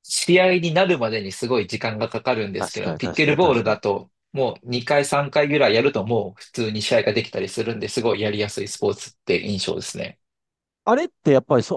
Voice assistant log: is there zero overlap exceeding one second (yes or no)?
no